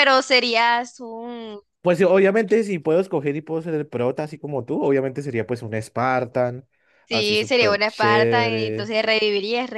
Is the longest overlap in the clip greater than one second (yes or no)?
yes